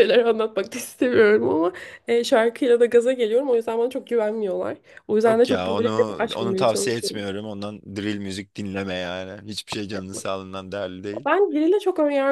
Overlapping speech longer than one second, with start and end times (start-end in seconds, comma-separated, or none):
5.3-7.3